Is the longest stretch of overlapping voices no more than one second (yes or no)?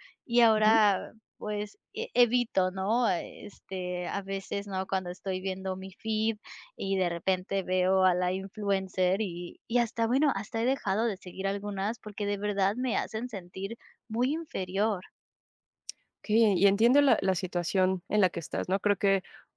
yes